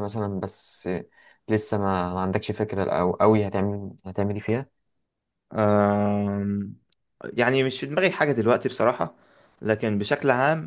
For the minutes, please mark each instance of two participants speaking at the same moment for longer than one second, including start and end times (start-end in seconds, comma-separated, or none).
none